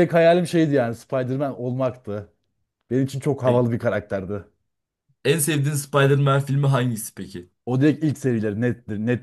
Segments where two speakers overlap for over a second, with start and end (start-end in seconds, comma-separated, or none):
none